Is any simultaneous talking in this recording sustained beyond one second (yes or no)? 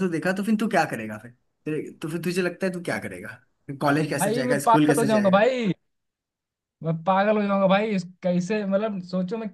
yes